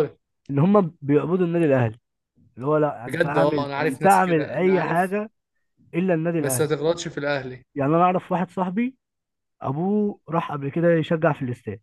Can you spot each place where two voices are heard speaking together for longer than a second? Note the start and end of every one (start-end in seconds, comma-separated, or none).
3.1-5.2